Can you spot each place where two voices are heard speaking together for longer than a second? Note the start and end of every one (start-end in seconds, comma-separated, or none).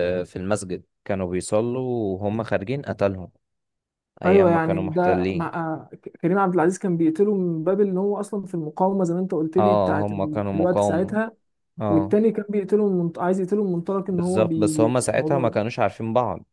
4.2-5.5, 9.6-11.2, 14.1-15.6